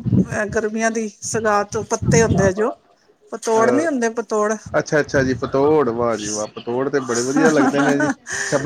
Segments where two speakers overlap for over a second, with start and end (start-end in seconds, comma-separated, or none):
none